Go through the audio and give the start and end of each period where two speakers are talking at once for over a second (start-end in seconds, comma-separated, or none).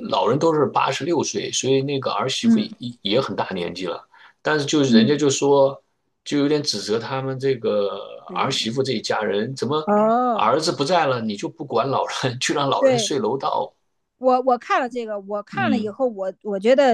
none